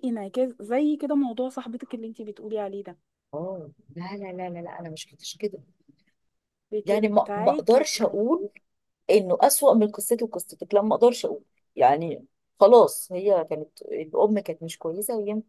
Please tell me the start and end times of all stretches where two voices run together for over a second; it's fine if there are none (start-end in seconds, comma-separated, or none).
6.8-8.2